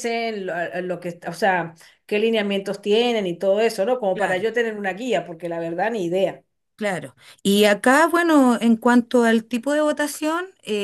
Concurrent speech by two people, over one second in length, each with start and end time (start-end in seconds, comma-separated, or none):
none